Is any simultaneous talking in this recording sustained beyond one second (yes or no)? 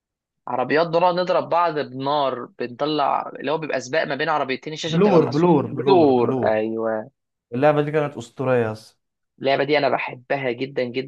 yes